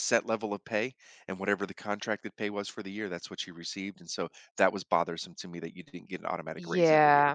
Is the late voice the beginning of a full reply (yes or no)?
yes